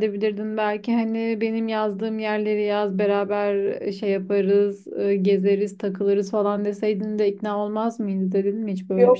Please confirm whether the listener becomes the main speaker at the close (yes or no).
yes